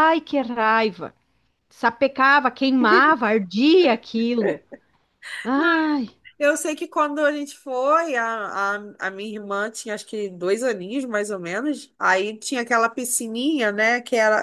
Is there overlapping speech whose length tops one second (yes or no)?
no